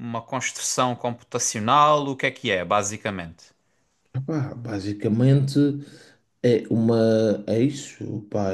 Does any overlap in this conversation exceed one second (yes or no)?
no